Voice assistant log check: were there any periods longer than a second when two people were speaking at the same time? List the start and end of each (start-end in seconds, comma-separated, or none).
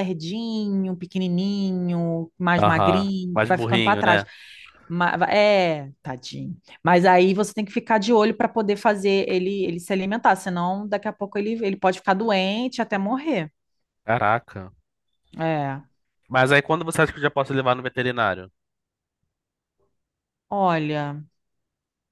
2.6-4.2